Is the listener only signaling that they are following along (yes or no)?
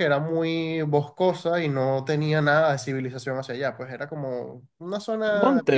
no